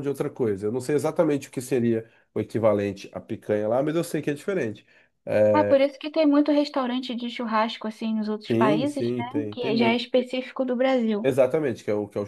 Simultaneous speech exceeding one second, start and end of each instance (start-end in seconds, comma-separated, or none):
8.5-10.0